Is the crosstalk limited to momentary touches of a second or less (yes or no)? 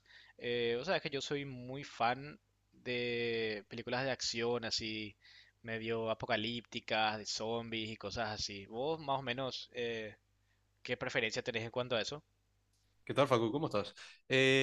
yes